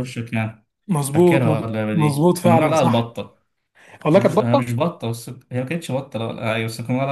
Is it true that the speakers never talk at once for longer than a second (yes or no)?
no